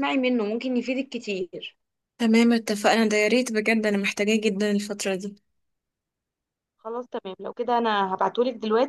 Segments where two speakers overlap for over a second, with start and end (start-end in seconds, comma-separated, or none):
none